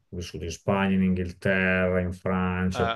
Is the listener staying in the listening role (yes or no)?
yes